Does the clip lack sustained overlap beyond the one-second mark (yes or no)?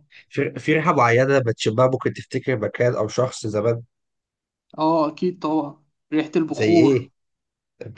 yes